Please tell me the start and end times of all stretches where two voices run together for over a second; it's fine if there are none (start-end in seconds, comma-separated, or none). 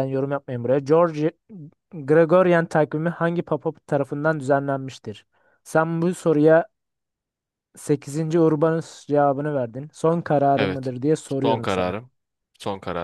10.6-11.9